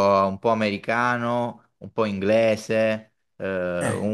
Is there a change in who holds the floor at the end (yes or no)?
no